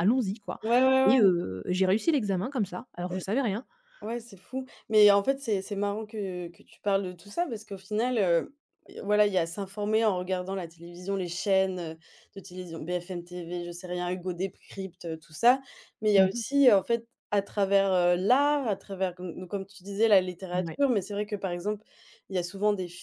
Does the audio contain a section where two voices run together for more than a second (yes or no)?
no